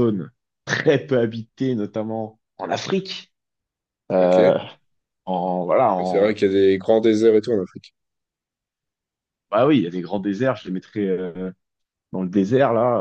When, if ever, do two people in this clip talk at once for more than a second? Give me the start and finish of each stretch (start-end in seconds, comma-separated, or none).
none